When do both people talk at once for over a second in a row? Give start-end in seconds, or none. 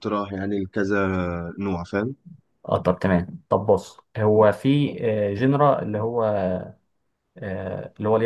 none